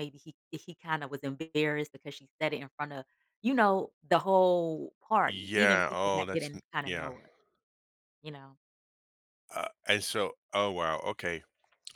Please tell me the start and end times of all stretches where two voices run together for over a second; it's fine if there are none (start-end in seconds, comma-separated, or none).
5.3-7.1